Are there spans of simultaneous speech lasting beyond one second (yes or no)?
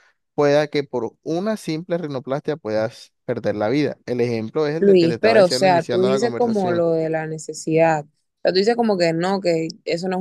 yes